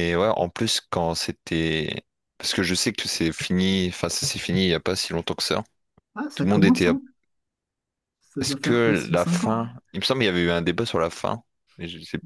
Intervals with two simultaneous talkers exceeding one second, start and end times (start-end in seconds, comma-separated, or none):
8.4-9.7